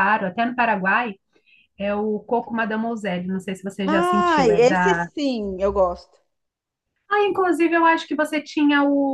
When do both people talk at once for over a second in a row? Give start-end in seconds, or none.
3.9-5.1